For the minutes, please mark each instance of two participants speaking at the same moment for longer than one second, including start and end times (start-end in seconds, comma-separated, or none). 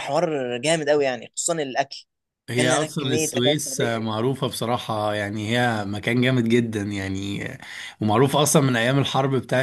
2.5-4.2